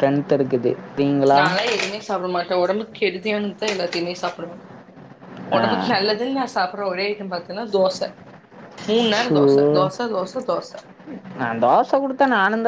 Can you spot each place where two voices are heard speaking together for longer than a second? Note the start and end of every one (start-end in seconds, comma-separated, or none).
none